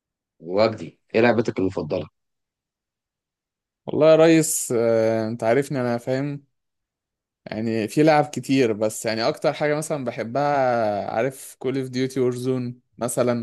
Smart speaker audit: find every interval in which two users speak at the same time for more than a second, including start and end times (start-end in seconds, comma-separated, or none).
none